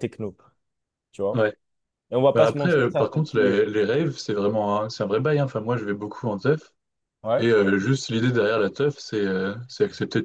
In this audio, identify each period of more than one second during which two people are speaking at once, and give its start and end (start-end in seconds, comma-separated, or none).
2.3-3.6